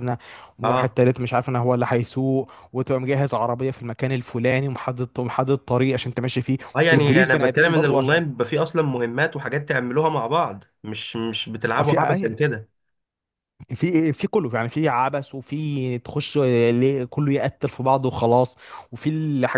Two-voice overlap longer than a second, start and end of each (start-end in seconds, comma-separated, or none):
6.8-8.1